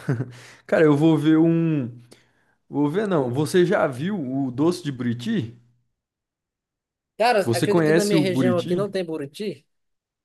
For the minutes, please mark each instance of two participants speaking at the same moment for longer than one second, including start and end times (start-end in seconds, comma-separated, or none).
7.4-8.8